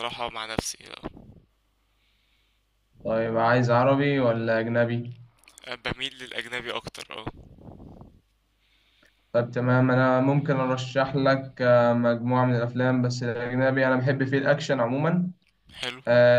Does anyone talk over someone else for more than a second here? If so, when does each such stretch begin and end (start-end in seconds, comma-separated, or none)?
none